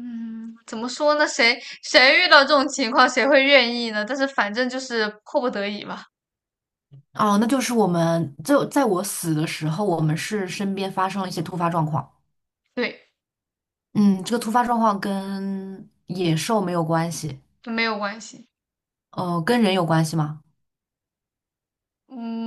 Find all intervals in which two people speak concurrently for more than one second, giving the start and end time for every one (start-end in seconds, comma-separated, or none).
none